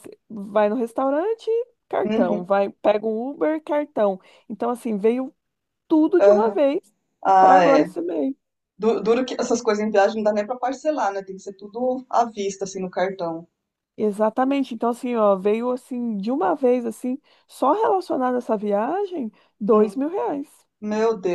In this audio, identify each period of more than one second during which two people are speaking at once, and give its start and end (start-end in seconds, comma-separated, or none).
none